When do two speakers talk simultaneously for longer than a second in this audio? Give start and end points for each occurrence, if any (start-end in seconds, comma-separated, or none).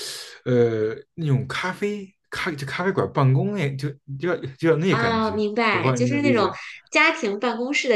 4.9-6.5